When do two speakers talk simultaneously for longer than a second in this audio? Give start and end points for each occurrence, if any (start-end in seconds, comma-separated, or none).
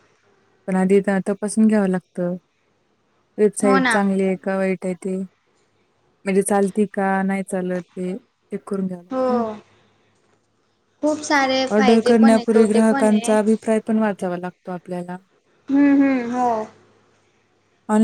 11.7-13.3